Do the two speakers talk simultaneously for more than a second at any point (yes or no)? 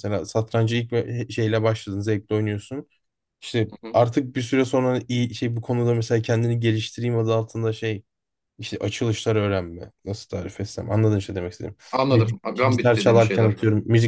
yes